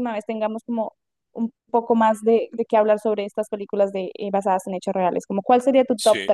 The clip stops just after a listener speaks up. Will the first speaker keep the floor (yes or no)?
no